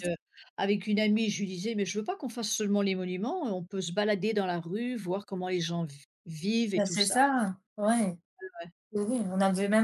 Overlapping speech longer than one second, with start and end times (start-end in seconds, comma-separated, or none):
none